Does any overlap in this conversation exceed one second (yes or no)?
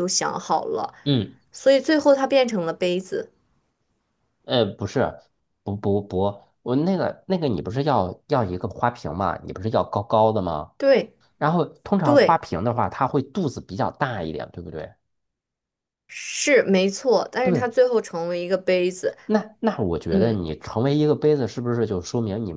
no